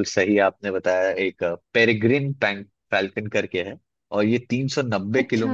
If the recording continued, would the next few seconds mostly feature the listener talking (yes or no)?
no